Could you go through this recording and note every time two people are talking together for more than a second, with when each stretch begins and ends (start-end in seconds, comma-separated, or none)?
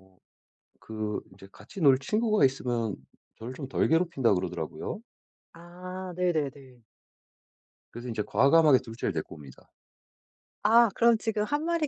none